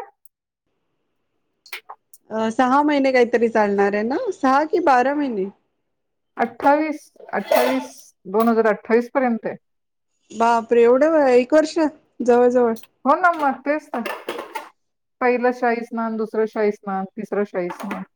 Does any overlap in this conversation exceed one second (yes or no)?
no